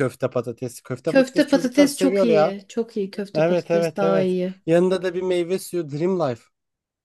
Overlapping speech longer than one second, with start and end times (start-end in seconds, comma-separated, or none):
1.1-2.5, 3.3-4.5